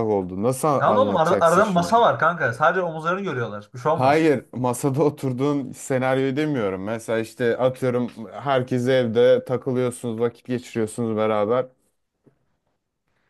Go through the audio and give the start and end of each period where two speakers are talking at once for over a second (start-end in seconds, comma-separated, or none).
0.8-2.0